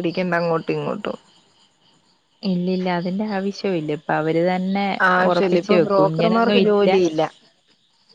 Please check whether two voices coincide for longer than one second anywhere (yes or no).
yes